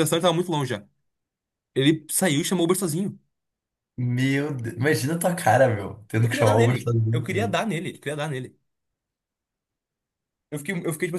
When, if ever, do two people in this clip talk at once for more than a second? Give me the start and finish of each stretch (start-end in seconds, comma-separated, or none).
6.2-7.5